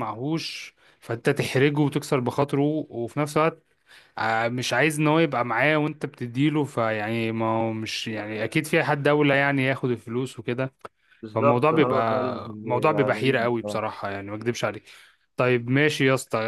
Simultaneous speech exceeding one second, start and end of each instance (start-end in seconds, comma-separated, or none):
11.3-13.8